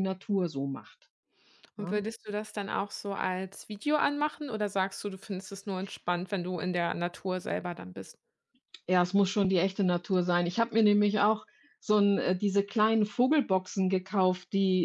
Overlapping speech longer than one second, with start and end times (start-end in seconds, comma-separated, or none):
none